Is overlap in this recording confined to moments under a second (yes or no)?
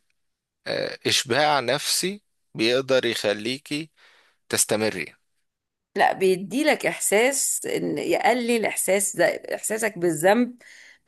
yes